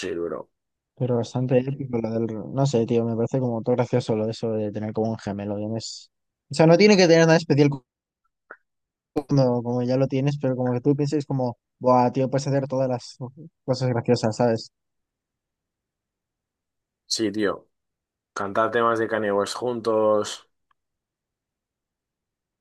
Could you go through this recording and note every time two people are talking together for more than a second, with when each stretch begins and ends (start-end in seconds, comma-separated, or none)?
none